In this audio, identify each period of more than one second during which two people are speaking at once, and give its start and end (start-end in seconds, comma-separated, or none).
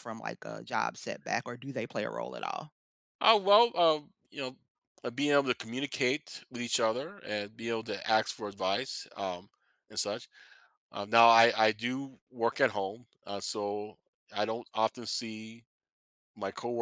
none